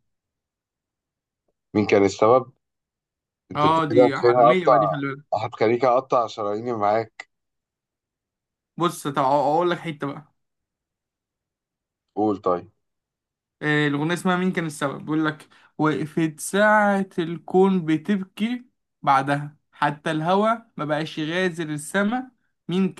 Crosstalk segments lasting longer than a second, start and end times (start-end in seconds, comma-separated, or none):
3.5-5.0